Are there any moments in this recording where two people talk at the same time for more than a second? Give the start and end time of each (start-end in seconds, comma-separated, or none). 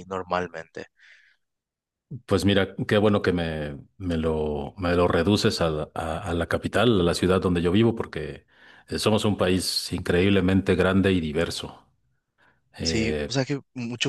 none